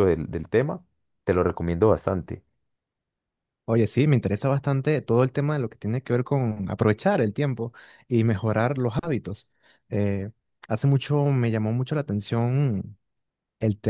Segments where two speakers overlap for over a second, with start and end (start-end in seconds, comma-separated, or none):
none